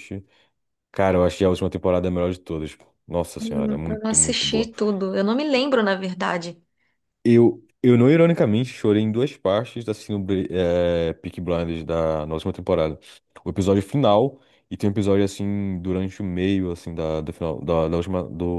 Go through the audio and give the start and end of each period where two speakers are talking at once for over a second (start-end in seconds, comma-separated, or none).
3.4-4.7